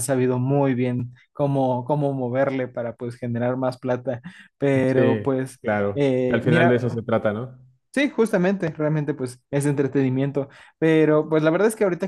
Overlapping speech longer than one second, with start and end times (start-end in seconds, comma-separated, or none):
4.9-7.0